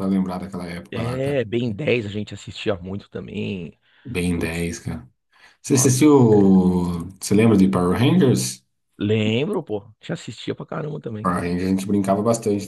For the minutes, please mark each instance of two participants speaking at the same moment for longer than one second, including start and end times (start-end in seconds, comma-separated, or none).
none